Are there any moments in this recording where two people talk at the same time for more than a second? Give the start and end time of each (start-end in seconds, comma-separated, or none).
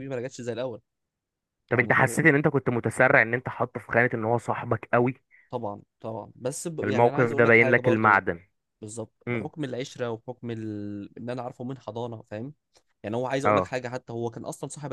6.8-8.2